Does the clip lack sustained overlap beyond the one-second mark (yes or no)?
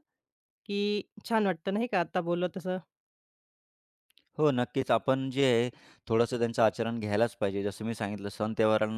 yes